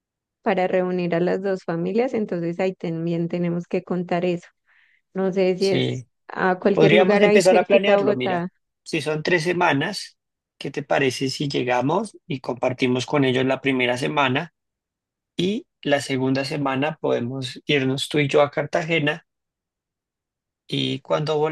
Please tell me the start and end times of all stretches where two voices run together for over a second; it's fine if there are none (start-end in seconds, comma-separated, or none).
6.7-8.5